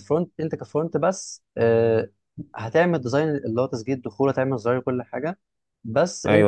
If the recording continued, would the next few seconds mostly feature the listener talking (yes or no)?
yes